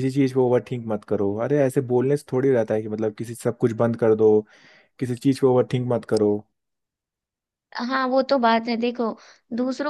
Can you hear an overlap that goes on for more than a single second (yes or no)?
no